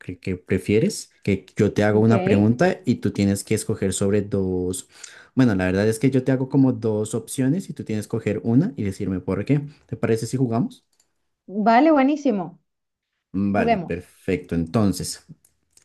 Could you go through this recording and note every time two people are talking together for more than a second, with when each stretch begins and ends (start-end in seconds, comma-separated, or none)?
none